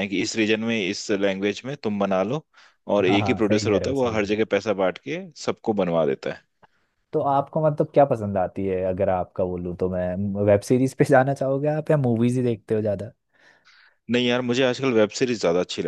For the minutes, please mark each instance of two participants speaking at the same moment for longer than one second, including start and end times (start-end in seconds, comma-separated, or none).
3.1-4.4